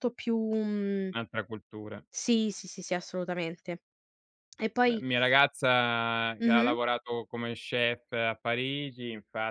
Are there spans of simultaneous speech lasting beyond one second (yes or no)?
no